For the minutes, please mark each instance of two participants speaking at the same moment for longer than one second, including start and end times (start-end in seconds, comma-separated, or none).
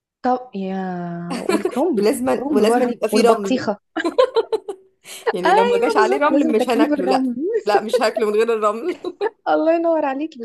2.0-3.7, 5.4-7.3